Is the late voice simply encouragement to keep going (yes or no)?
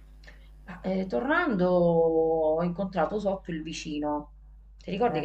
yes